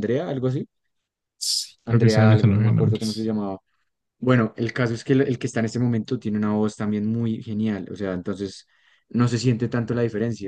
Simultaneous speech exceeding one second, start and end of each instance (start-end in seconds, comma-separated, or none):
1.9-3.3